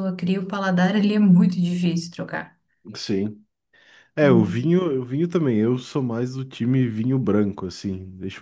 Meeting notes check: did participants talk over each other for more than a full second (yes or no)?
no